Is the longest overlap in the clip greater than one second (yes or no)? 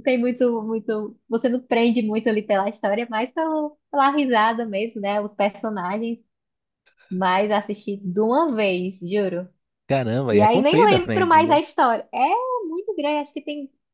yes